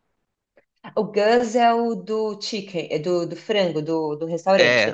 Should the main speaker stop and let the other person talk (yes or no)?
yes